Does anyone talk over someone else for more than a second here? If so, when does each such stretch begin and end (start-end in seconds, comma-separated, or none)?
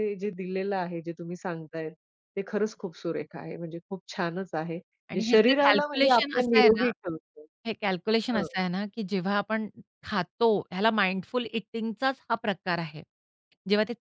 5.1-6.8